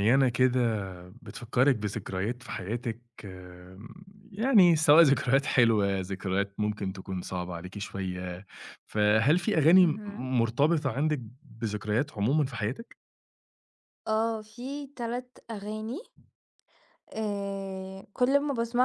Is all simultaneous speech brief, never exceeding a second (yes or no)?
yes